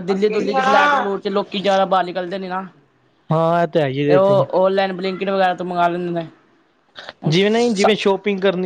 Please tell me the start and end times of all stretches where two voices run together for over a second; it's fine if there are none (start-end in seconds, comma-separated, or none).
none